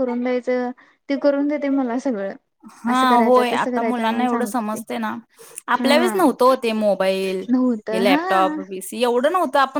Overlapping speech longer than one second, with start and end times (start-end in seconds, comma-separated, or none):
2.9-4.8